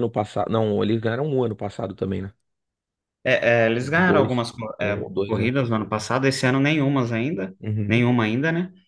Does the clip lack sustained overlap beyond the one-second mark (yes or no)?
no